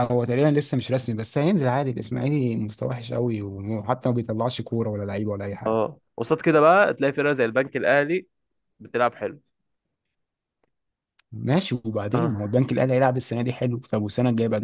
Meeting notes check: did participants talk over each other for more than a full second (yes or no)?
no